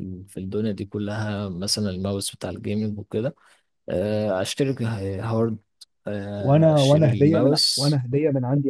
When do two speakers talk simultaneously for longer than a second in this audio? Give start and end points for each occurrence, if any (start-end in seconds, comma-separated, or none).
6.4-8.0